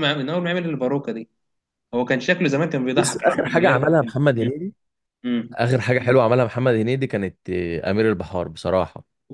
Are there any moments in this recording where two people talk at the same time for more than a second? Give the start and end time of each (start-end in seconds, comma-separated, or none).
3.0-4.2